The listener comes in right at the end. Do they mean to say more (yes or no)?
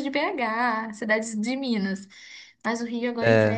no